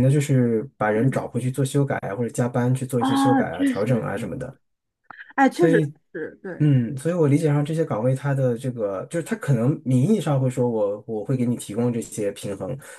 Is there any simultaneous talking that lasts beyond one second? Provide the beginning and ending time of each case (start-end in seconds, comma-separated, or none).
3.0-4.3